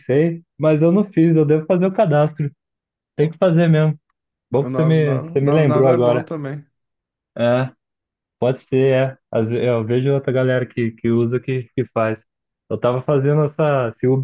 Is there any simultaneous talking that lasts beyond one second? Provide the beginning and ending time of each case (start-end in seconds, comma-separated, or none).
4.6-6.3